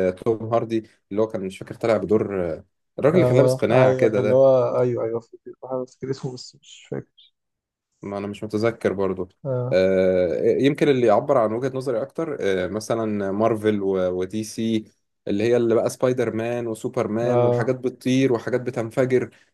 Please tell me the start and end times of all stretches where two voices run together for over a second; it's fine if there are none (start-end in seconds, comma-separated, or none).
3.1-4.4